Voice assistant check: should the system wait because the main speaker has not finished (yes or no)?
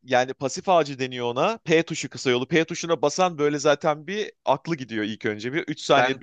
no